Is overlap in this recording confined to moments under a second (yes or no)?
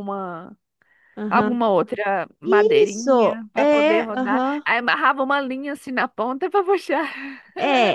no